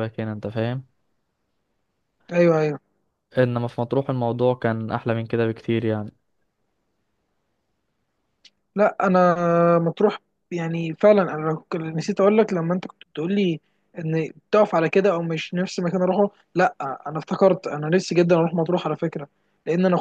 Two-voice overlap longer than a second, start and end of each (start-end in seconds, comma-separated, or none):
none